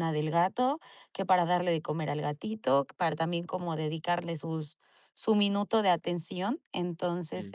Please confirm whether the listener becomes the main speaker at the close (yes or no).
no